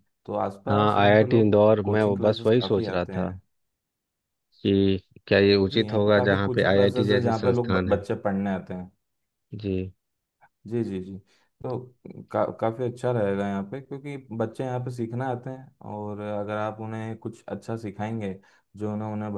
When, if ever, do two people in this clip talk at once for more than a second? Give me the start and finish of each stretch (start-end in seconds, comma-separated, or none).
0.7-3.3, 5.7-8.0